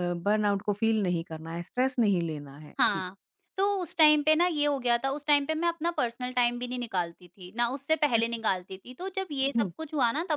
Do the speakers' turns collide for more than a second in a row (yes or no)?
no